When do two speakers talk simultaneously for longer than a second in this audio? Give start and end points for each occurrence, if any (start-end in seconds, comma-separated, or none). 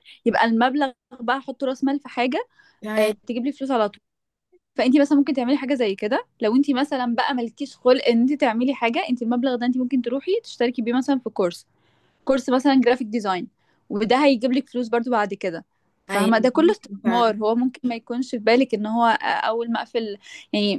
16.1-17.4